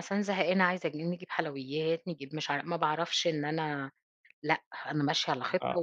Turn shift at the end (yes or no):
no